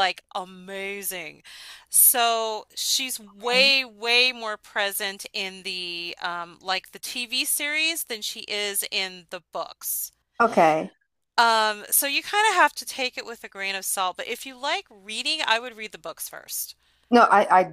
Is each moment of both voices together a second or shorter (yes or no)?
yes